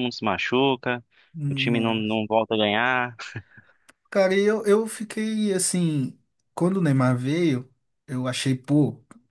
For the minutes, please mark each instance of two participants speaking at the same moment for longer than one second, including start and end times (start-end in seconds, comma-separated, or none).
none